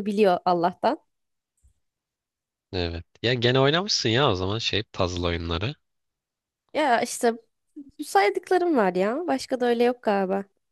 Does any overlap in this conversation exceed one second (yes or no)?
no